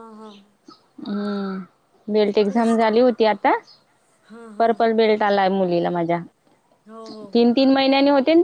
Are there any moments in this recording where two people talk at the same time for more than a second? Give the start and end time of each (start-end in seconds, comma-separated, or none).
none